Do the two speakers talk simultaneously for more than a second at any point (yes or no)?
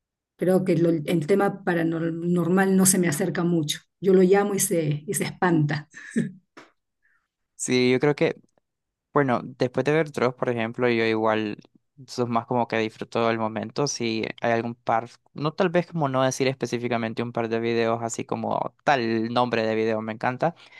no